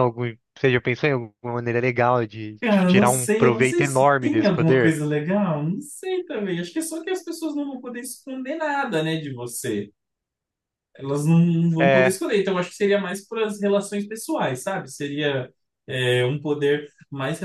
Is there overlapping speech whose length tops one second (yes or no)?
yes